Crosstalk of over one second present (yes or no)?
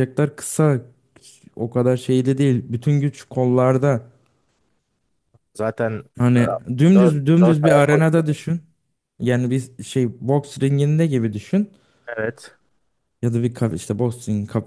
yes